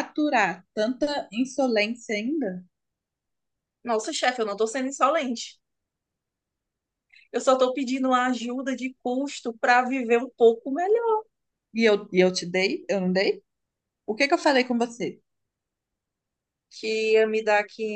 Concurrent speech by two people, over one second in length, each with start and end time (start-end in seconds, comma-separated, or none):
none